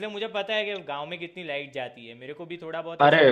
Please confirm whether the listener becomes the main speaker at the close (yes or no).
yes